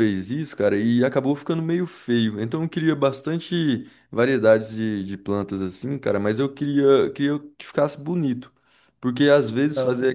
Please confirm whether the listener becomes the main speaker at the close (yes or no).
no